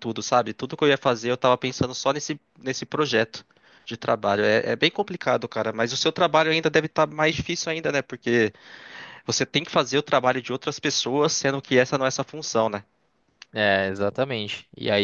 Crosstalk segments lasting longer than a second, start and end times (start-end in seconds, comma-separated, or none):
none